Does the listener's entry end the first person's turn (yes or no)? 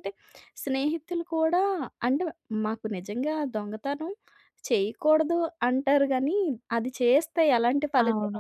no